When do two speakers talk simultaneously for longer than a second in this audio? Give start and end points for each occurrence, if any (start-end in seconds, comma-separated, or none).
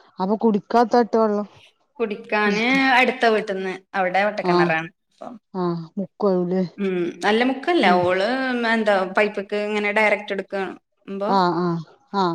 none